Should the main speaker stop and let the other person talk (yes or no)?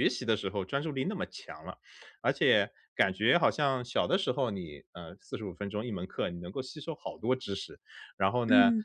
no